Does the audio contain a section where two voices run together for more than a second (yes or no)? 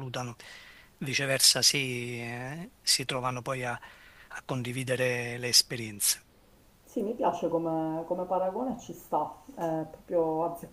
no